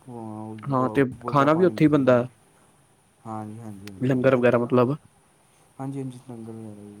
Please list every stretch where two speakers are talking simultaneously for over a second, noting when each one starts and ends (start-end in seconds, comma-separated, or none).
0.7-2.3